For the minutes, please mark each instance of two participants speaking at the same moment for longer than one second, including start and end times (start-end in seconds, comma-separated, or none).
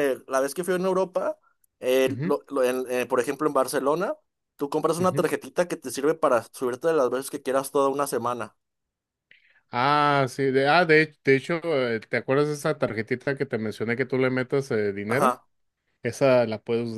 none